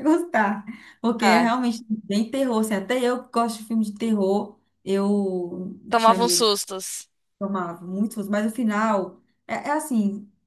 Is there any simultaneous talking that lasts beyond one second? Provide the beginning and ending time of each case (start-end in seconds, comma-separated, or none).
none